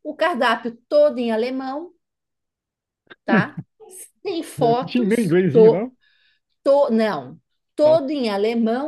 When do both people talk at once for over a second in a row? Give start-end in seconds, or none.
4.6-5.9